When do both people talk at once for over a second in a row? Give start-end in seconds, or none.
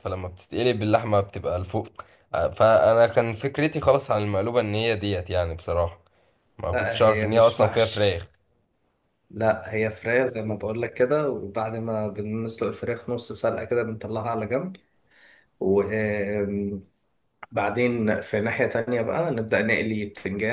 6.7-8.2